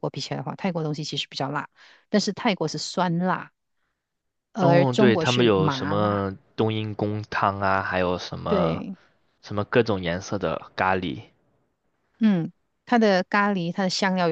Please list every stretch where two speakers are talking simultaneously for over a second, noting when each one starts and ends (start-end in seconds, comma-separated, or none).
4.6-6.2